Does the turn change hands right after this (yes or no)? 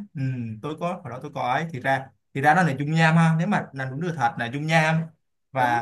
no